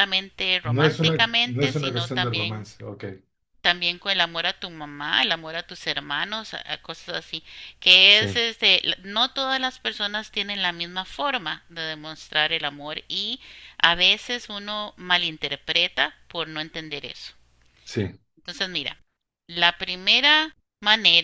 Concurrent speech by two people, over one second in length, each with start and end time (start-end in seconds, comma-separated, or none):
0.7-2.7